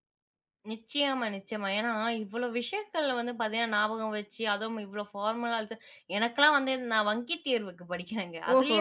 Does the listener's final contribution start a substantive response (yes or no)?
no